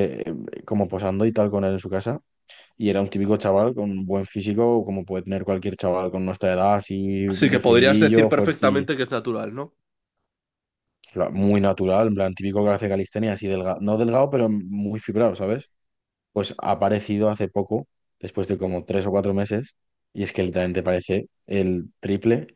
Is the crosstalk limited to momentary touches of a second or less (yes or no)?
no